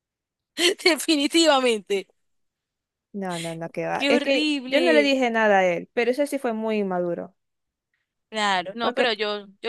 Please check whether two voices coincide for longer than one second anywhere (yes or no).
yes